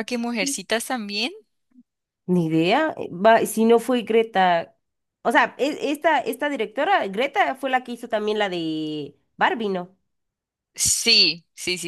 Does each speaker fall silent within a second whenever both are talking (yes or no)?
yes